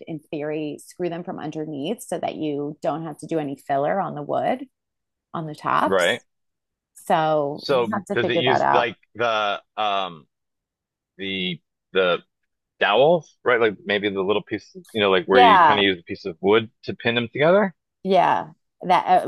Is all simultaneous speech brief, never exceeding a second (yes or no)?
no